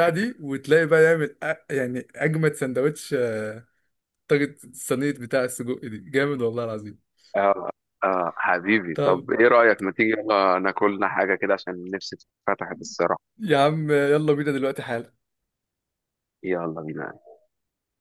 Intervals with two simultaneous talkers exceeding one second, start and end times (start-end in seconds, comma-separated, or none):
none